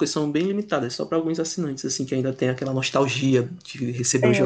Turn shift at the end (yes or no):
yes